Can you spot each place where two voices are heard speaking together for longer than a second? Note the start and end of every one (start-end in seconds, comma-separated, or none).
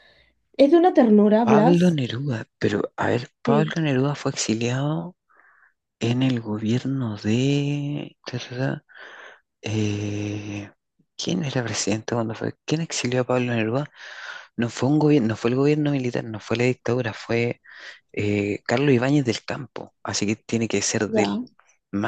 none